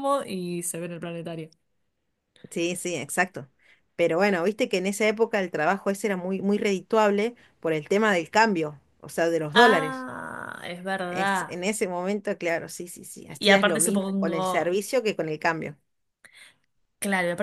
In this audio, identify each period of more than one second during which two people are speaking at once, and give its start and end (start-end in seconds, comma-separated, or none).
13.4-14.8